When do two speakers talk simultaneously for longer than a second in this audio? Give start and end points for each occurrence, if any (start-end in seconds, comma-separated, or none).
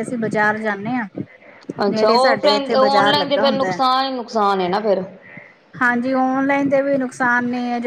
none